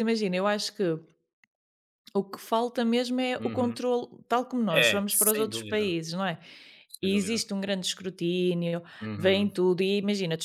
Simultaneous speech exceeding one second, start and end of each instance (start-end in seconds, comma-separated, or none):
4.7-5.9